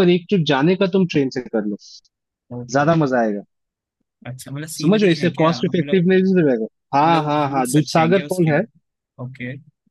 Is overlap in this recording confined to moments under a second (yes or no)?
no